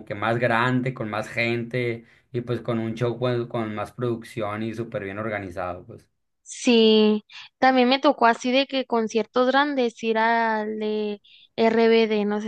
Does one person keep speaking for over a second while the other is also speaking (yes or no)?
no